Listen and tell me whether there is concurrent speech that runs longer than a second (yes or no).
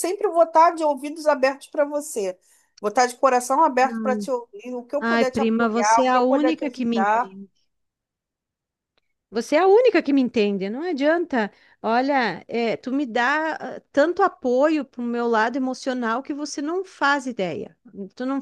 yes